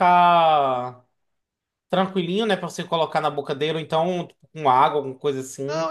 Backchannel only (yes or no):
no